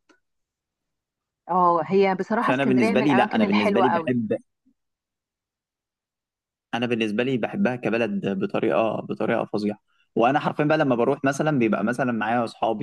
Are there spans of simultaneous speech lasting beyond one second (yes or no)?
yes